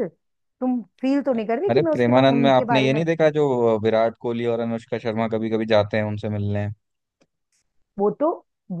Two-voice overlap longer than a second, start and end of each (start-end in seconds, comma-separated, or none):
1.7-3.0